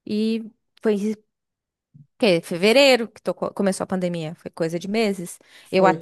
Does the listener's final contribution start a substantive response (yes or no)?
no